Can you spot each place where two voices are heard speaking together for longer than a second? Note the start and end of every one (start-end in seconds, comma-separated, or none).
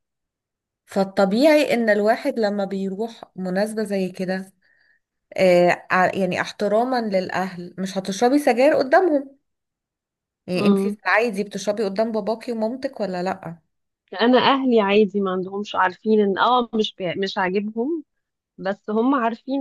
none